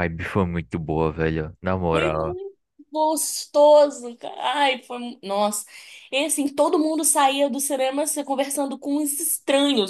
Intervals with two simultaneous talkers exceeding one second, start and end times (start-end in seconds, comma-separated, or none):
none